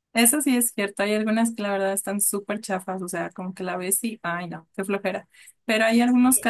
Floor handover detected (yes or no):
no